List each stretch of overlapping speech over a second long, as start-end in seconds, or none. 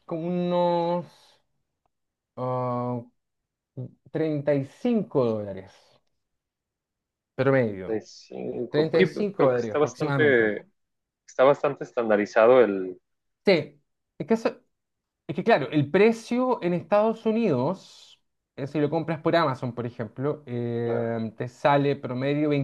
8.7-10.5